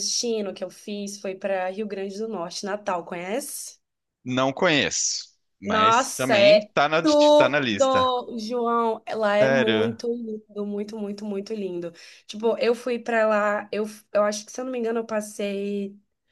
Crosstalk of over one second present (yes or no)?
yes